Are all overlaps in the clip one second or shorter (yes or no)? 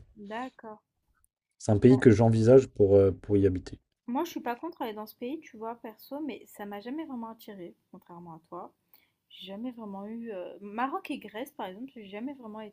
yes